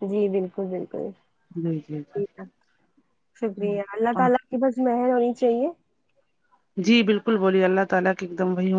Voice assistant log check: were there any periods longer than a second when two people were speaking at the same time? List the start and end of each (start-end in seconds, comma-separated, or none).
none